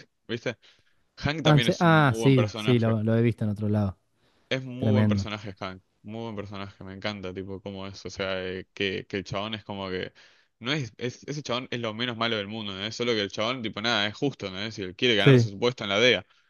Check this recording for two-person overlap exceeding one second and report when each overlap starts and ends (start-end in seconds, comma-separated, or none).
1.4-2.9